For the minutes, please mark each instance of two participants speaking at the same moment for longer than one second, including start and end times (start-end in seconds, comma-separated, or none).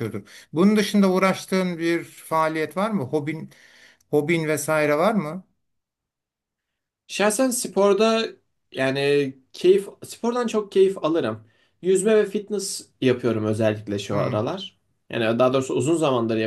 none